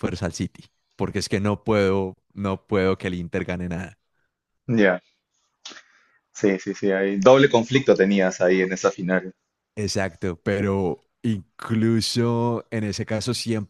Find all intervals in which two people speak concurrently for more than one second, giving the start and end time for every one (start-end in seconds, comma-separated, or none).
none